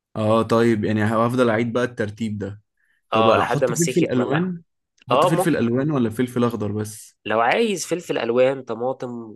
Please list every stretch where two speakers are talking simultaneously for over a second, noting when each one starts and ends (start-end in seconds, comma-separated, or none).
3.1-4.4